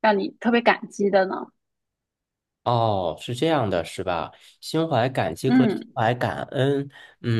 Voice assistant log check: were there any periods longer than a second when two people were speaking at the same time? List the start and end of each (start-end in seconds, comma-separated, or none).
none